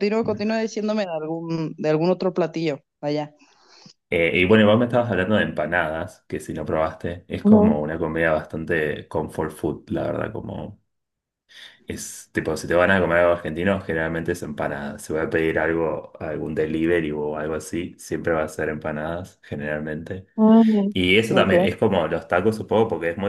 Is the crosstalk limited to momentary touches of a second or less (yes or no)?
yes